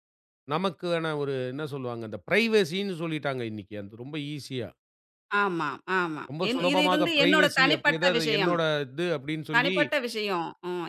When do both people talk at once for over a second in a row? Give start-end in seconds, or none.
6.3-8.6